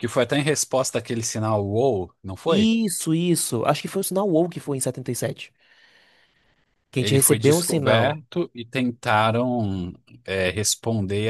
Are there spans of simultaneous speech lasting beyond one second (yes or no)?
yes